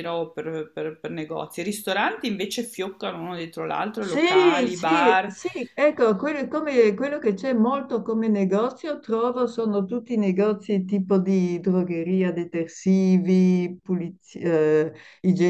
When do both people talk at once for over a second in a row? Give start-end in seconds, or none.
4.0-5.3